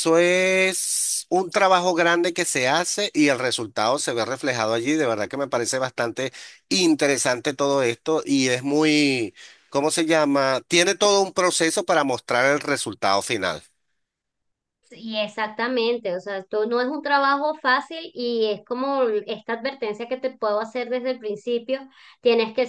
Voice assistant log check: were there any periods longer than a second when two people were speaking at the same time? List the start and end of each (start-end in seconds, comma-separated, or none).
none